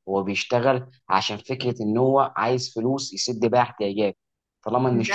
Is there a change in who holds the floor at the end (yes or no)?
no